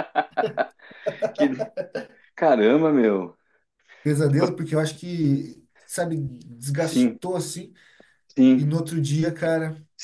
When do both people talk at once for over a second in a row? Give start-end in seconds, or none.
none